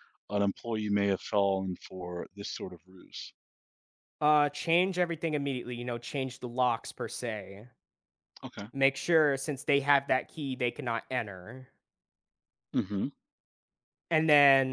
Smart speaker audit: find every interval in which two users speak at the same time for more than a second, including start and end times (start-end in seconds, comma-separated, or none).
none